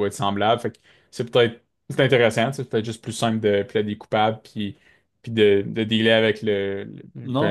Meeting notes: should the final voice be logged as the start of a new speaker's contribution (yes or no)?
yes